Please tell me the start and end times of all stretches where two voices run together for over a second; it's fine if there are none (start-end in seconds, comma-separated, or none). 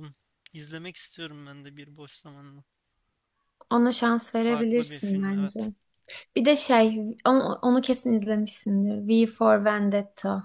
4.3-5.6